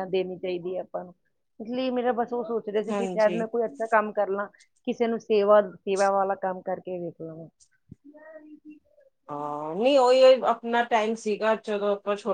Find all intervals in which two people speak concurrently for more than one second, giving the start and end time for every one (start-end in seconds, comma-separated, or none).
none